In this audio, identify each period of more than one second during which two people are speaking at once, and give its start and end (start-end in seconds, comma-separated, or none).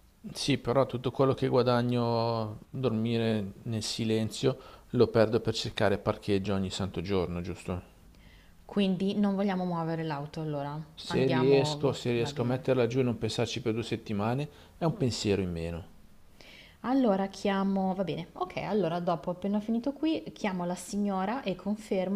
10.9-12.7